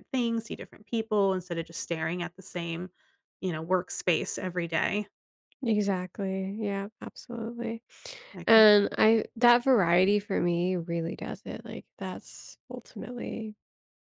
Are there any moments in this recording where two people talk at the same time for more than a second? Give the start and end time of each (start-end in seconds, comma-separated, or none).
none